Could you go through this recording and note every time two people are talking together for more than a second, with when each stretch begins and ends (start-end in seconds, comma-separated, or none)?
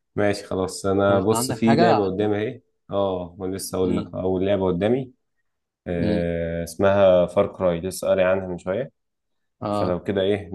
1.1-2.3